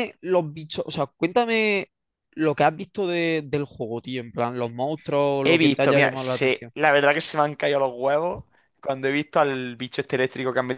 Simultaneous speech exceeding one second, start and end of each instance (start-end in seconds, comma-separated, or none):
5.4-6.7